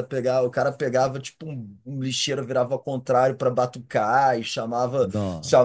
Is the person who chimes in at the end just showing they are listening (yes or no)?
yes